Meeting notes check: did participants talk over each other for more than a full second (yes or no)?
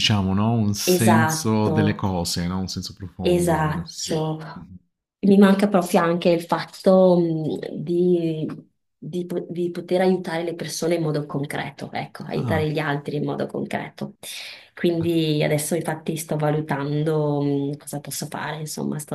yes